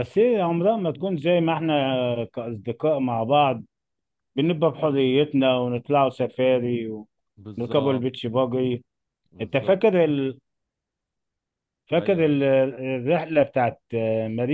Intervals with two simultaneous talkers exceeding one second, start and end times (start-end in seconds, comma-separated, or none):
none